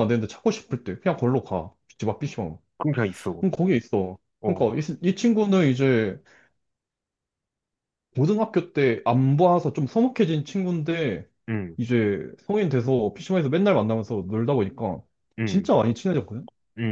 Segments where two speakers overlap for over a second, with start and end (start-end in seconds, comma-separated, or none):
none